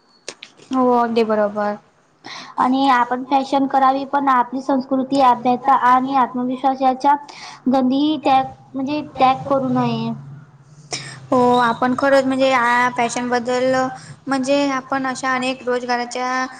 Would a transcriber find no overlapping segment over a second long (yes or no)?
yes